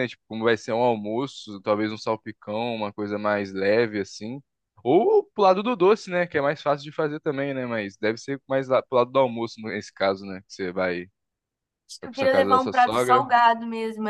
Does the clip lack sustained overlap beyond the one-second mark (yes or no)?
no